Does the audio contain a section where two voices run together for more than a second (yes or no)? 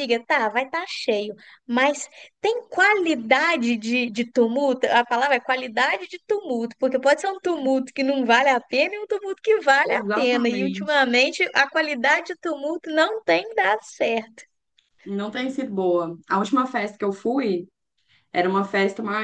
yes